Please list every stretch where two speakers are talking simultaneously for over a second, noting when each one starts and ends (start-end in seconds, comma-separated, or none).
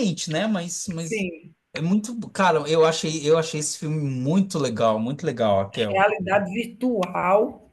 none